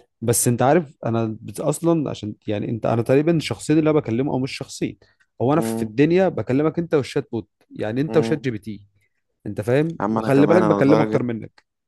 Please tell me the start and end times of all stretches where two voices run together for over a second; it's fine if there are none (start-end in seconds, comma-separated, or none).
10.0-11.2